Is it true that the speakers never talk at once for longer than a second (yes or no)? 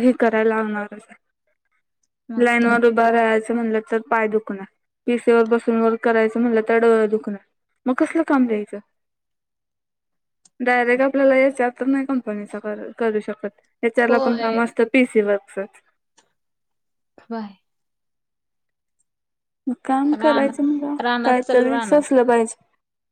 no